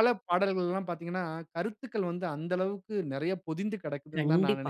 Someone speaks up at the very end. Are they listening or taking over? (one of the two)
taking over